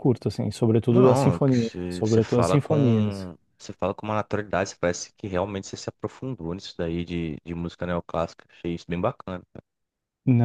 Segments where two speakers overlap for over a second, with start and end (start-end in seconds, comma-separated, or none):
0.9-3.3